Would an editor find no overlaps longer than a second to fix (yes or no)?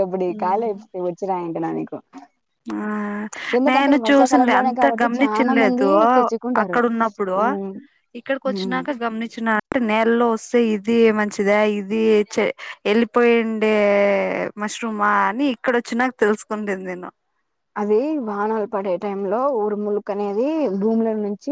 no